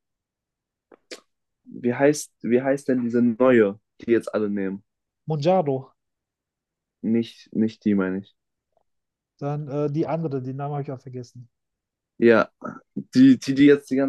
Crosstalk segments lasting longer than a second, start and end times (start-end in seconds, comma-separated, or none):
none